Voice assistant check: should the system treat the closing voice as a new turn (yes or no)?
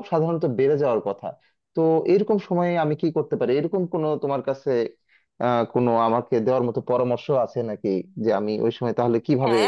yes